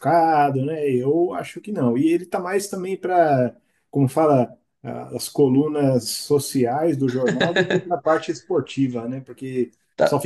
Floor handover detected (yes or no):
no